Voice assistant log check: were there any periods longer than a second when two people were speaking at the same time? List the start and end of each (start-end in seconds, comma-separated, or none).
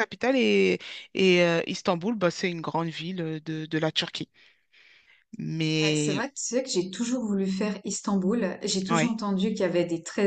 none